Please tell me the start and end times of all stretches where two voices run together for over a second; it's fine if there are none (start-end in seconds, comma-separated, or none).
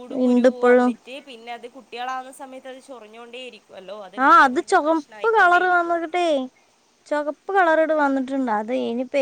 none